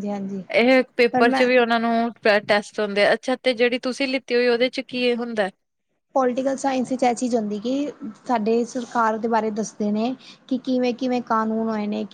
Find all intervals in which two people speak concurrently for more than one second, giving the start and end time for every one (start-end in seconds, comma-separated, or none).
none